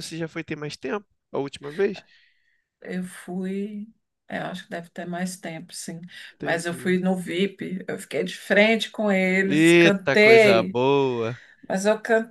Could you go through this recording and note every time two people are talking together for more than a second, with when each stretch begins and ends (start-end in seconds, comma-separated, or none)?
9.5-10.8